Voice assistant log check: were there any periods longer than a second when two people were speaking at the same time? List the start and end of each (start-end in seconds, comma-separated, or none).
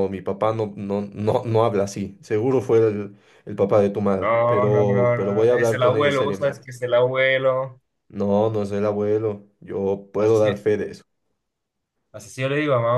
4.2-6.6